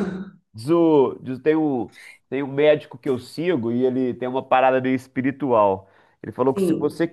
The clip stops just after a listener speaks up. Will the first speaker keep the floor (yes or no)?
yes